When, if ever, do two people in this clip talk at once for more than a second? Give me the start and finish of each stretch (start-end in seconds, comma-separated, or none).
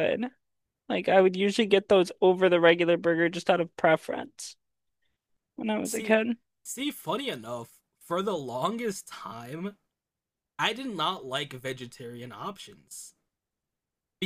none